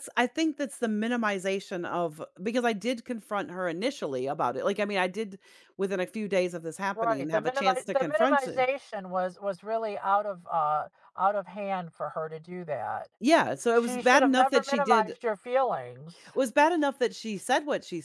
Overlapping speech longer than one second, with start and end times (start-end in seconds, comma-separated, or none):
6.9-8.7, 13.7-15.1